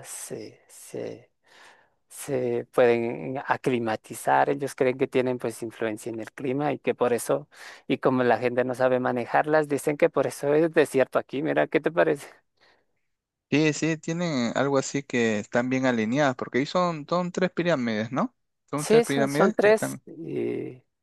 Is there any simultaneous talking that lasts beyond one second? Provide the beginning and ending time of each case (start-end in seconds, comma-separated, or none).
18.8-20.0